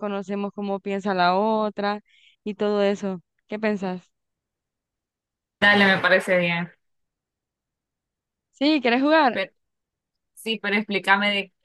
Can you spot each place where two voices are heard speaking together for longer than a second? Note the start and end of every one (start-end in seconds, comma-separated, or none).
none